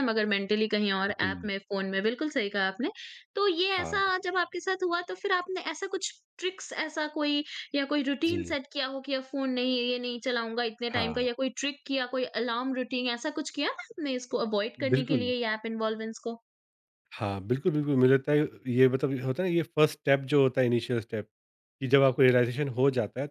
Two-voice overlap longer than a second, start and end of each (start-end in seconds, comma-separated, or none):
none